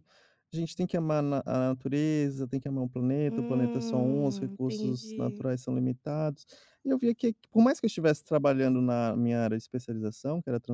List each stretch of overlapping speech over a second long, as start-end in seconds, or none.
3.3-5.5